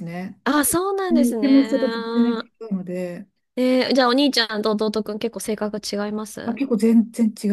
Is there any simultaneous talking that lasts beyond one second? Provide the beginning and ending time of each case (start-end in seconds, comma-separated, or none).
1.1-2.4